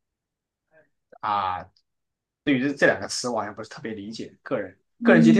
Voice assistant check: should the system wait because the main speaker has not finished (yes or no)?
no